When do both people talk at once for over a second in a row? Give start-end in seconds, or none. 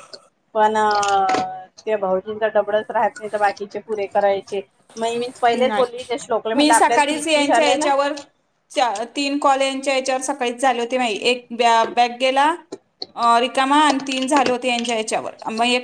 6.6-7.9